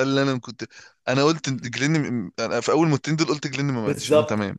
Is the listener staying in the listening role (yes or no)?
no